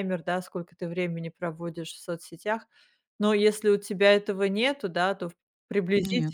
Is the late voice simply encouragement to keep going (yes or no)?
yes